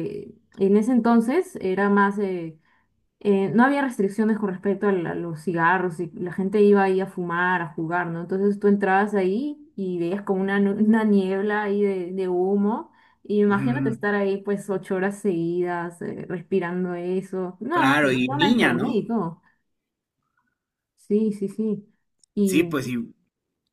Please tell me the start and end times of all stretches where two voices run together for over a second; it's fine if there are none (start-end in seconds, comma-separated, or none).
17.7-19.0